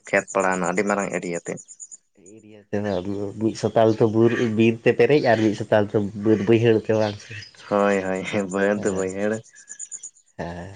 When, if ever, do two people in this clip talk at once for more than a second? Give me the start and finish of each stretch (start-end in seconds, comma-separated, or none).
none